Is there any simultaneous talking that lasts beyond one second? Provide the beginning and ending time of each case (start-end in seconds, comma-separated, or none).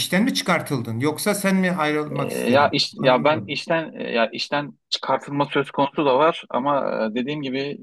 2.1-3.6